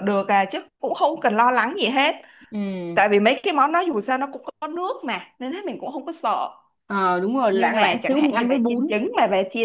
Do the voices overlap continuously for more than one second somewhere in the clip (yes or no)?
yes